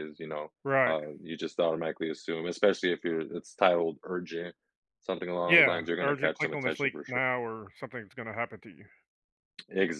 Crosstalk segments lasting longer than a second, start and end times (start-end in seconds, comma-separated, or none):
5.5-7.2